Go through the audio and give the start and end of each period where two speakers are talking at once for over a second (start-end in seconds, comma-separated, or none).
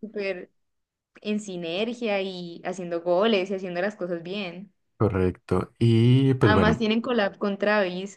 none